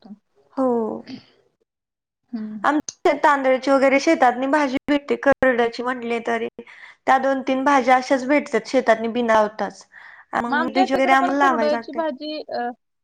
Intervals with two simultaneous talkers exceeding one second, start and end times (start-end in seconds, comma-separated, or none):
10.6-12.0